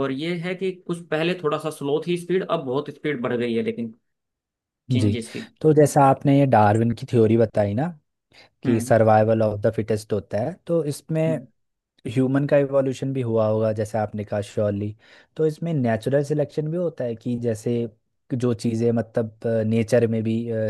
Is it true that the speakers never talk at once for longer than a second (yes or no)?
yes